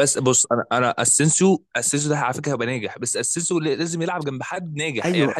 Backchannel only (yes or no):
no